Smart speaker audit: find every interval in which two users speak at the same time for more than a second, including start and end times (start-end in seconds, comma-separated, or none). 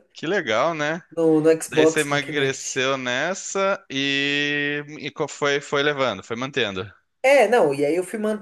1.7-2.9